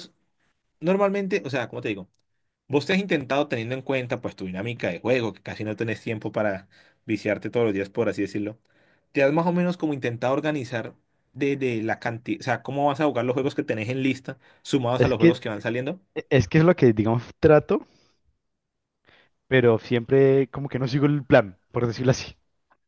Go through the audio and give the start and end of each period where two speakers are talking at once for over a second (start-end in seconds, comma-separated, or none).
none